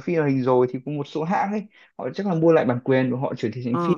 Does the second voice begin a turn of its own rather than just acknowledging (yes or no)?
no